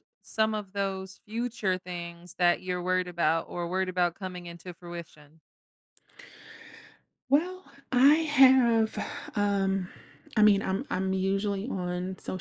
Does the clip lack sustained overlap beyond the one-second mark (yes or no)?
yes